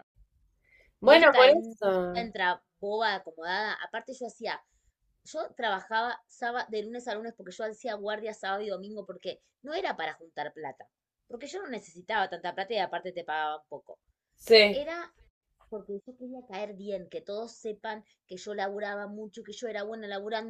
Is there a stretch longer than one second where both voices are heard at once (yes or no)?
yes